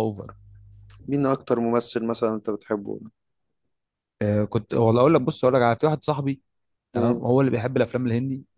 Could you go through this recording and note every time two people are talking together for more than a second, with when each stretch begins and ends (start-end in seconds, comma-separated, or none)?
none